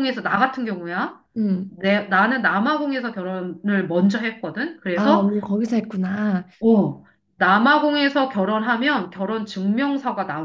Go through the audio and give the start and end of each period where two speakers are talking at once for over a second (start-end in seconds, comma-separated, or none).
none